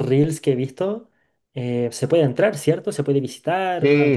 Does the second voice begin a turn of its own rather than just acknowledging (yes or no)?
yes